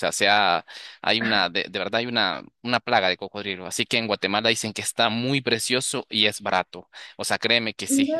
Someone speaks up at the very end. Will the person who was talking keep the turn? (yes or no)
yes